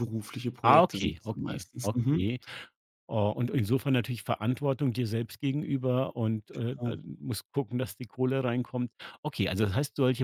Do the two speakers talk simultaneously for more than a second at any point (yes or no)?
yes